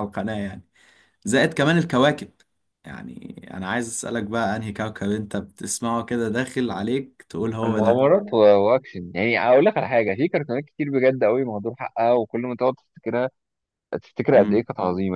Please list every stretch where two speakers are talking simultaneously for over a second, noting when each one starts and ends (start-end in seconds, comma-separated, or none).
none